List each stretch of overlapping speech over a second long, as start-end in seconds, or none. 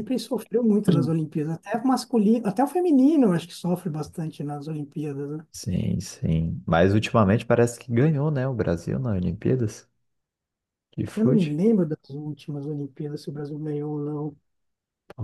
none